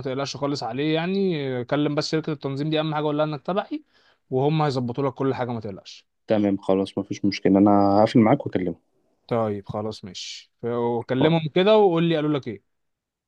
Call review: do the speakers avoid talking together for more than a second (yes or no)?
yes